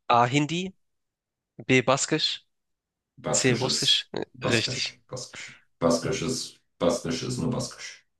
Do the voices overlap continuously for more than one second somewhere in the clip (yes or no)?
yes